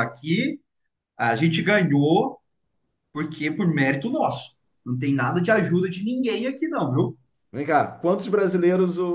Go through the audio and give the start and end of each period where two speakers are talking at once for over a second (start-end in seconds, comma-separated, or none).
none